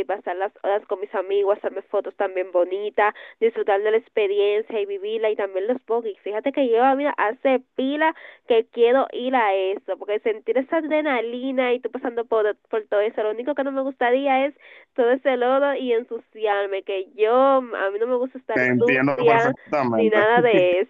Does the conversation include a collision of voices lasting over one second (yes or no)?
yes